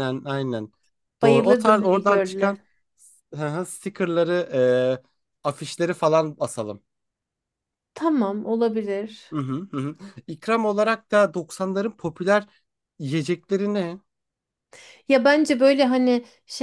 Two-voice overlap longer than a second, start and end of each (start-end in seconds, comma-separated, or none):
1.2-2.6